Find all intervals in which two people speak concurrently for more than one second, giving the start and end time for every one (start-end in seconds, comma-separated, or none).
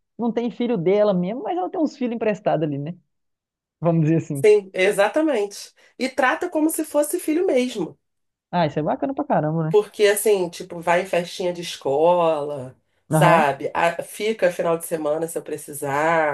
none